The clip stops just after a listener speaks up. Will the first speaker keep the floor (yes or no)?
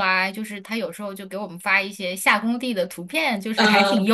yes